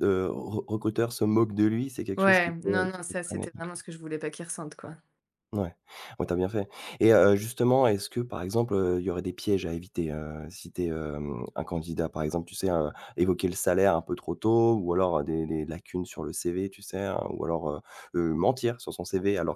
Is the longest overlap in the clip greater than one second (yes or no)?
yes